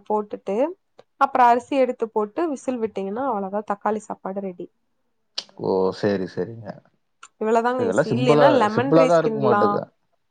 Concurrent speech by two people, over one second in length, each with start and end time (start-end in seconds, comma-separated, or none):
7.8-9.6